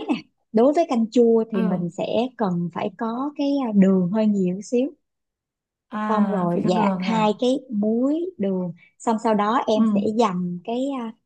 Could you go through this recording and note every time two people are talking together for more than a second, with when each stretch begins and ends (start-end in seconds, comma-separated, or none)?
6.1-7.3